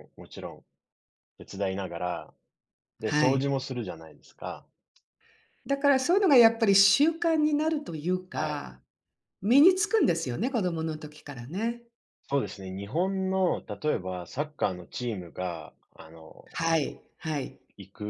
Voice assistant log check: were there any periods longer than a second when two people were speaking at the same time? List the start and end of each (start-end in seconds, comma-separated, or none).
none